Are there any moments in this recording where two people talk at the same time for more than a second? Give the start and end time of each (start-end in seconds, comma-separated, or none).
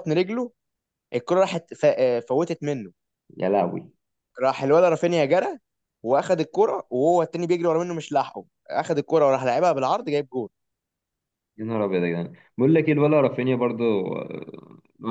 none